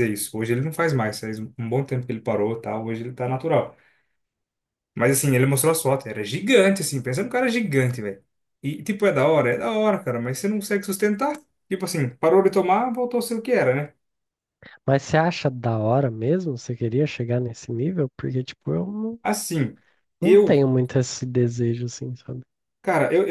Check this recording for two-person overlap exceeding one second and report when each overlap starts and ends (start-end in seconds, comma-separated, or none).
none